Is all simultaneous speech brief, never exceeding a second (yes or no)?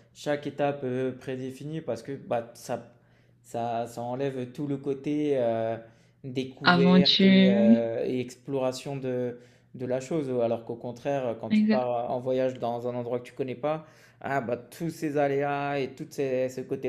no